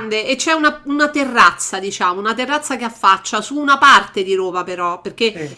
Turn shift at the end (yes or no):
no